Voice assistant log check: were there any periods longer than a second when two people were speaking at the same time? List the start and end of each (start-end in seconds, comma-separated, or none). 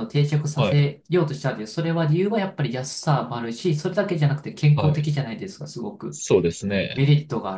none